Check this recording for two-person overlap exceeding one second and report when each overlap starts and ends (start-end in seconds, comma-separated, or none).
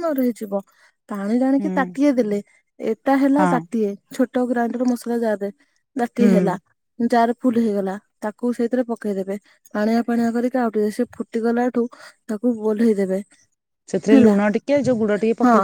none